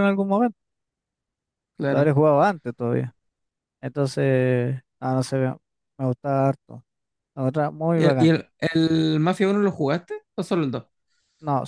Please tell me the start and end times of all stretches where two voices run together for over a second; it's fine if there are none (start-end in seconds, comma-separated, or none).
none